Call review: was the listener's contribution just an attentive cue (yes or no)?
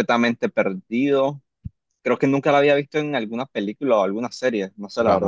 no